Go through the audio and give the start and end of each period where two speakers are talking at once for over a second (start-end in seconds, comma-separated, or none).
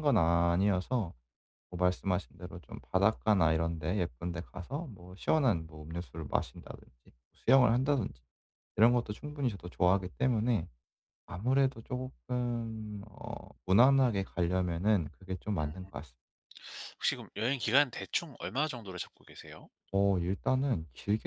none